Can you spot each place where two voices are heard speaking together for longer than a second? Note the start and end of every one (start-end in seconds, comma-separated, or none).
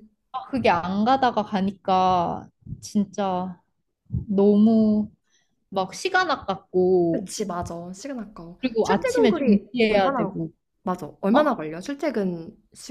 8.6-10.3